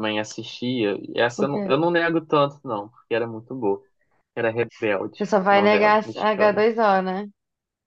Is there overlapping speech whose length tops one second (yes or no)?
yes